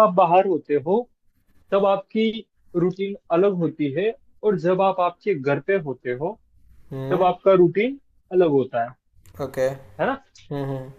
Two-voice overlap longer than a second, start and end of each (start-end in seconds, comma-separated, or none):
none